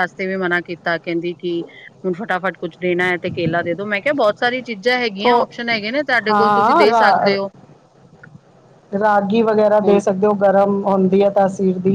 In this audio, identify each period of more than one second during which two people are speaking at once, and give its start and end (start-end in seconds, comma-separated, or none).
none